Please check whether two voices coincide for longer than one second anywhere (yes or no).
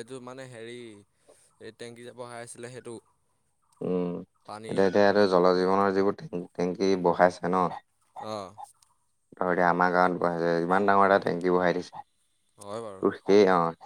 no